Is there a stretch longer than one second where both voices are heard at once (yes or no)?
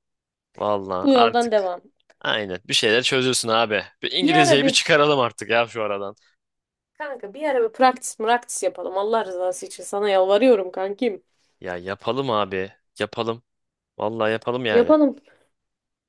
no